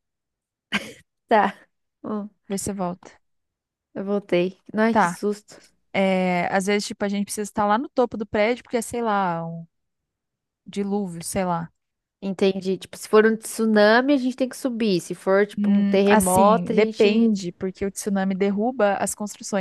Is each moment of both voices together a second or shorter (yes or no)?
no